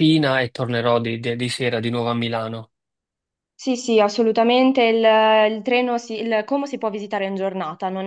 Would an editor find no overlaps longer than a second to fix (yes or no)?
yes